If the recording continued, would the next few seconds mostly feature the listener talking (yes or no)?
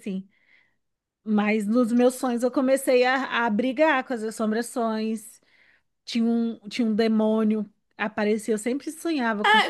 yes